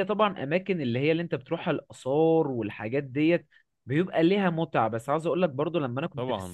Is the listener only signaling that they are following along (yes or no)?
yes